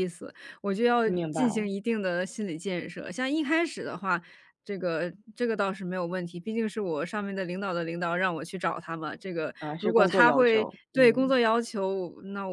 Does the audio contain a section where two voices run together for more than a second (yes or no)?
yes